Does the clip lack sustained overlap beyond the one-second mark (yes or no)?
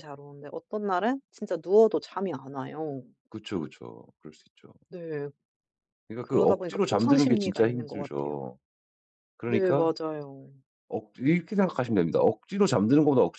no